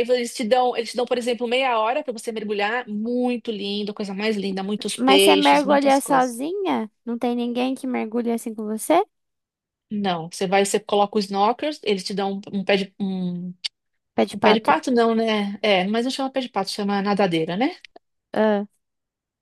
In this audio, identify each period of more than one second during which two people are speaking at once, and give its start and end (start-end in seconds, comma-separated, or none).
5.0-6.4